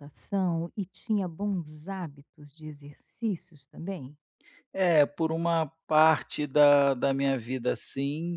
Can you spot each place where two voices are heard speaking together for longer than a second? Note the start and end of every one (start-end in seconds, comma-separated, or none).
none